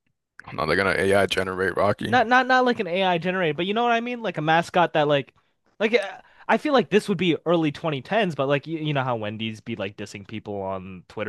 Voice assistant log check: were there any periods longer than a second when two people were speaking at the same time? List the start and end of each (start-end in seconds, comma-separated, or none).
none